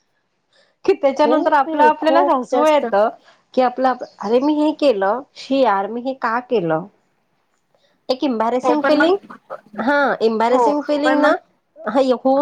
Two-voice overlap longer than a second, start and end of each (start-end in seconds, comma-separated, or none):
1.1-2.9